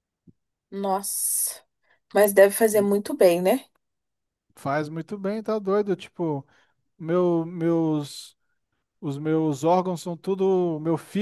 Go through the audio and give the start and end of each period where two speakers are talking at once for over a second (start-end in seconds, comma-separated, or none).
none